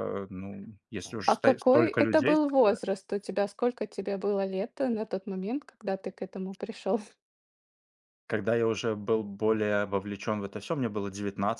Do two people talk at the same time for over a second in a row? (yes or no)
yes